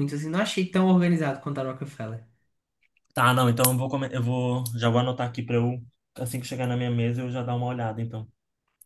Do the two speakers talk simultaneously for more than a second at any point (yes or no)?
no